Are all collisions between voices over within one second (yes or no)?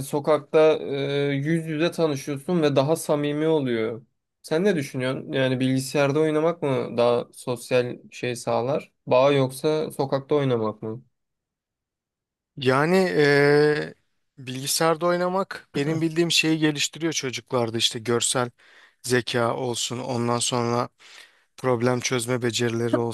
yes